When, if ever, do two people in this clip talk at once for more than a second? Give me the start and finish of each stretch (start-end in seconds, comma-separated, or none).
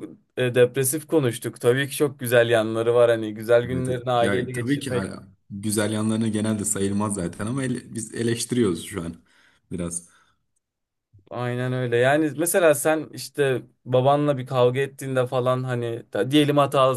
3.7-5.2